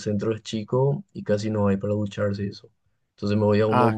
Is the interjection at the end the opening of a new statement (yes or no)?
no